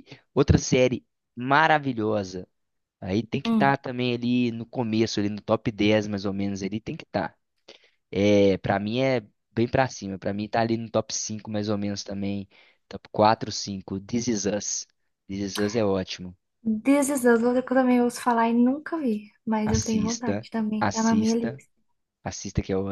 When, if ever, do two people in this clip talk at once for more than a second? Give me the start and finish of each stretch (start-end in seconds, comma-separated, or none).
19.6-21.6